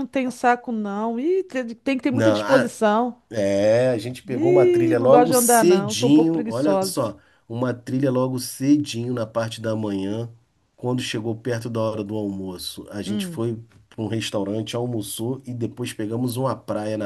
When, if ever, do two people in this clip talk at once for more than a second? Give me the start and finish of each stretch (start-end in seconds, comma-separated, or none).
4.3-7.1